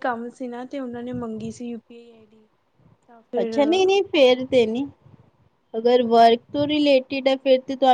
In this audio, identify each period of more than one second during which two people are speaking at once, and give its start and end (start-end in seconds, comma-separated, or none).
none